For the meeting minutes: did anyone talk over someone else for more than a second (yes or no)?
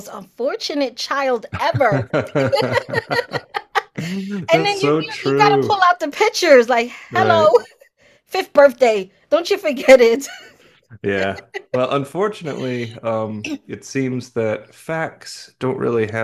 yes